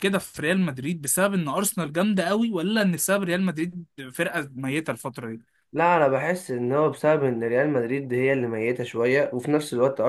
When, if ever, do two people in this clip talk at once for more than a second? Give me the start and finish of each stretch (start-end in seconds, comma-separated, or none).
none